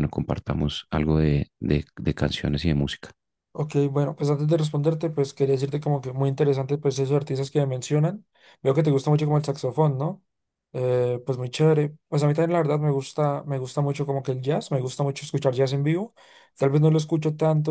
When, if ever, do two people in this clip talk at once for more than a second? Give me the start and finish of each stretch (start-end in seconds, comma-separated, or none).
none